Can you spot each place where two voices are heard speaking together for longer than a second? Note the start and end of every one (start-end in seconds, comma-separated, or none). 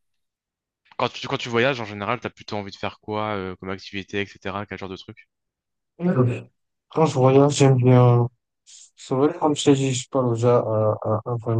none